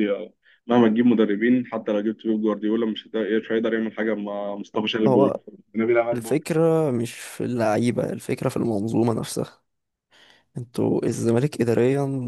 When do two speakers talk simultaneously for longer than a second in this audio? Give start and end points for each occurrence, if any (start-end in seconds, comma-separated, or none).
none